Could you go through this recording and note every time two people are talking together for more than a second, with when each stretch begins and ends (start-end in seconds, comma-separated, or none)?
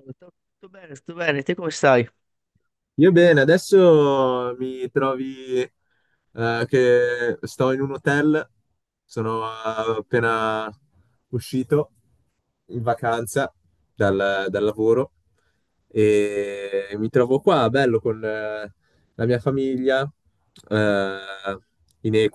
none